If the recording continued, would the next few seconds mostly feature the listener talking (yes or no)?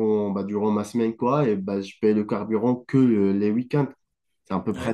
yes